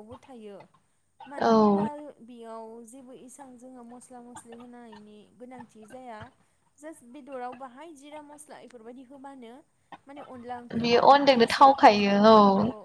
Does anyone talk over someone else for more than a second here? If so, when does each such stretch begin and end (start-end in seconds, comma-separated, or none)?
10.8-12.2